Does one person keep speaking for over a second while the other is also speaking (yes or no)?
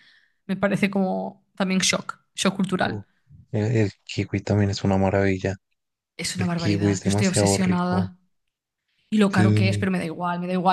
yes